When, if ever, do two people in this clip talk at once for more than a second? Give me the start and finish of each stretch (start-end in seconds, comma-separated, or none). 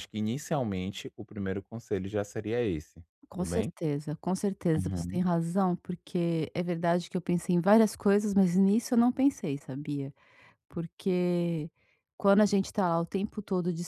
none